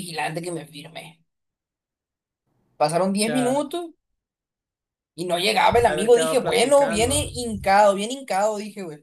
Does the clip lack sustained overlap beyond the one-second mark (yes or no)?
no